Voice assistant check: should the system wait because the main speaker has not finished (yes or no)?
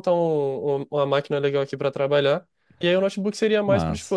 yes